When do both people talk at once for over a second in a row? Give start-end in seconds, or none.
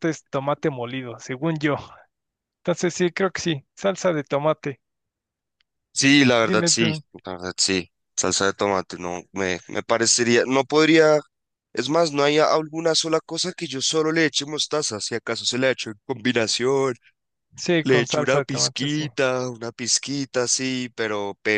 17.8-19.0